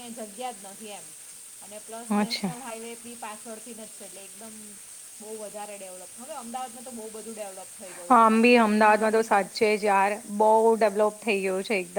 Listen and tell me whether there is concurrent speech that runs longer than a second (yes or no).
no